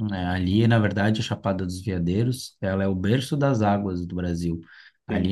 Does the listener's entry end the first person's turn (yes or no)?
no